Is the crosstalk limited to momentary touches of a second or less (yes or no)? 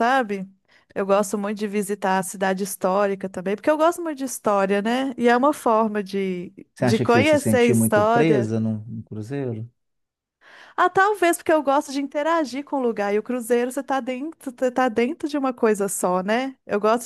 no